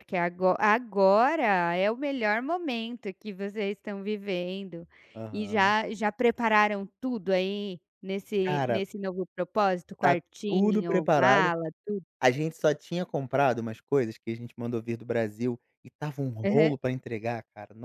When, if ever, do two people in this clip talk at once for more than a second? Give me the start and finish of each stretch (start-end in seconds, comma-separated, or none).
10.0-11.5